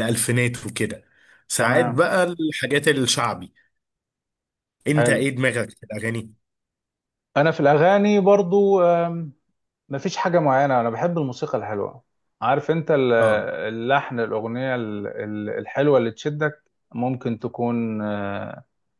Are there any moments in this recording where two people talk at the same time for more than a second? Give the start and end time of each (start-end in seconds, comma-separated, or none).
none